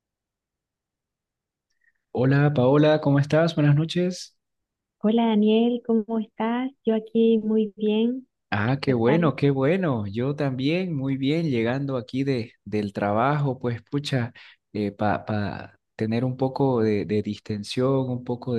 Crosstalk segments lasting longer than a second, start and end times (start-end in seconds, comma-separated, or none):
none